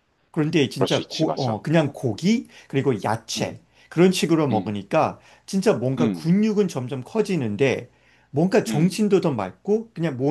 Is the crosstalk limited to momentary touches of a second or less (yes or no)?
no